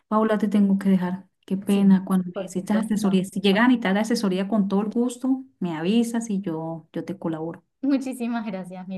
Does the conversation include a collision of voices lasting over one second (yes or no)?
yes